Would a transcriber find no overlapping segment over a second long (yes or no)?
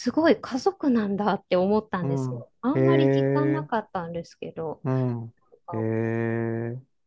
no